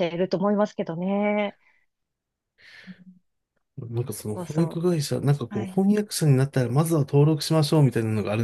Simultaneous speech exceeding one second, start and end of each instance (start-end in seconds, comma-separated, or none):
none